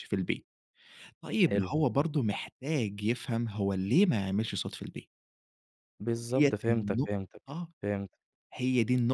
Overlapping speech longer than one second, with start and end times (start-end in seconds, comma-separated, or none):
6.1-7.4